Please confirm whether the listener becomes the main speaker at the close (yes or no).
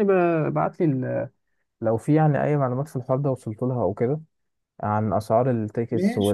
no